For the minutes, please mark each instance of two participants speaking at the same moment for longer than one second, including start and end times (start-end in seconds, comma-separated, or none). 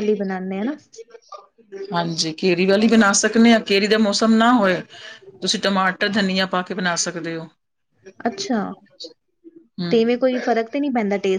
none